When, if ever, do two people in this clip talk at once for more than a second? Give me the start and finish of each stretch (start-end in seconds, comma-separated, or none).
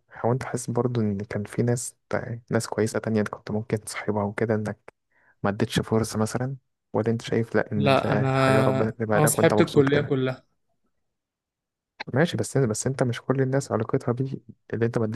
7.8-10.1